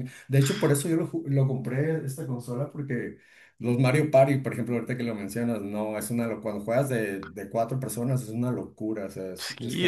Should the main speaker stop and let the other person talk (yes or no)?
yes